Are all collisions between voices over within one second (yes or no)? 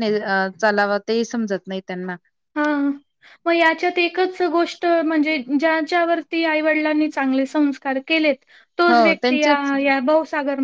yes